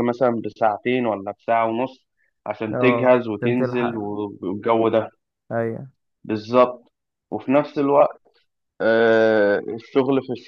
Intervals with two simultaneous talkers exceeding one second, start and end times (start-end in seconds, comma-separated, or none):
2.7-4.0